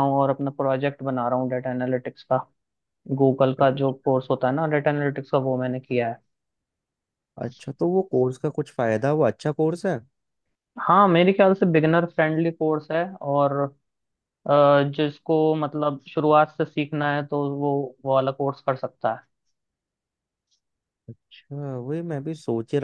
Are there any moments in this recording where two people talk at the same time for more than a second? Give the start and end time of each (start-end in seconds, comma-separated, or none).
none